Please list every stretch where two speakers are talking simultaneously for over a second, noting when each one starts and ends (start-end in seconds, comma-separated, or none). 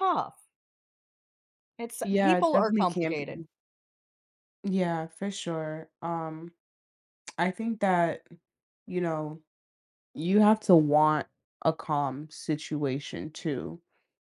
2.0-3.4